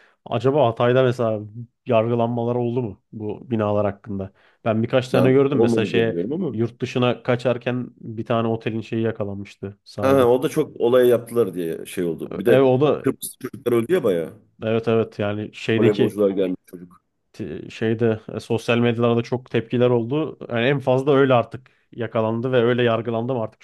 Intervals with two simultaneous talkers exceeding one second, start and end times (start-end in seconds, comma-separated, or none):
5.1-6.6